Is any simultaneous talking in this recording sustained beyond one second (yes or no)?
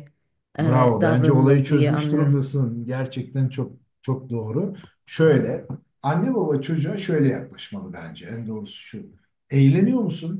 yes